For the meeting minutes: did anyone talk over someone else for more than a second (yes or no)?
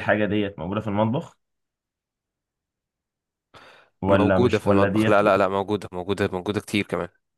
yes